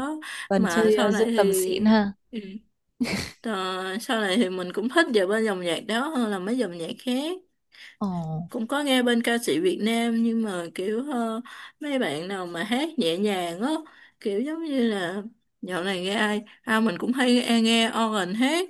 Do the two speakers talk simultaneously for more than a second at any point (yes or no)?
yes